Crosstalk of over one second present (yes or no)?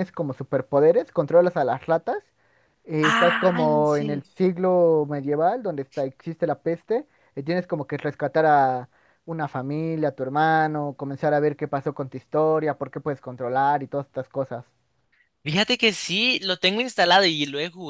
yes